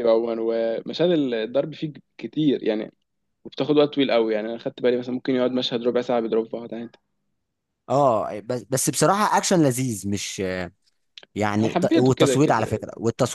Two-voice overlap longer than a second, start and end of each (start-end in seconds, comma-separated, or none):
11.6-12.8